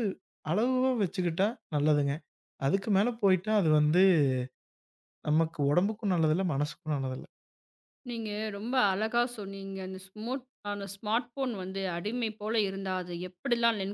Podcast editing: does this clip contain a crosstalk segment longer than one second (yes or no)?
no